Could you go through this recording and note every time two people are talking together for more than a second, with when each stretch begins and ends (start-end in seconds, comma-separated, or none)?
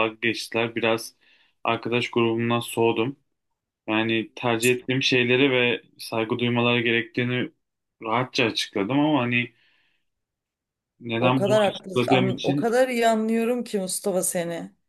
11.2-12.8